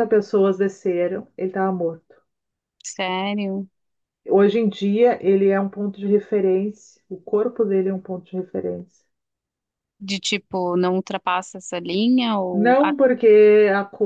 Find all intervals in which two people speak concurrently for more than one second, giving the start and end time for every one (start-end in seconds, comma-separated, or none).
none